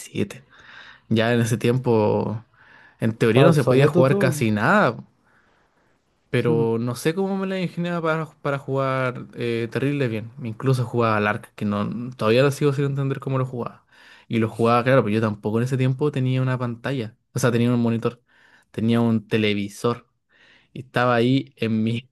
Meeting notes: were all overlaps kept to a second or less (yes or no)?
no